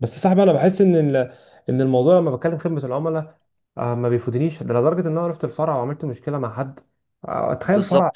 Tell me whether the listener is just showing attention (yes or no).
no